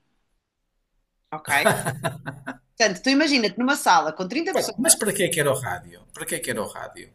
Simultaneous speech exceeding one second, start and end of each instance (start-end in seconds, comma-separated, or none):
none